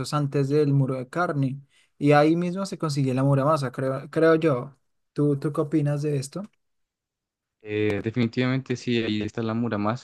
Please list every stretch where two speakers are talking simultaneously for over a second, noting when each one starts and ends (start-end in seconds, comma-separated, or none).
none